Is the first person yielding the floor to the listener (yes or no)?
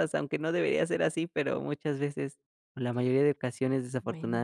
no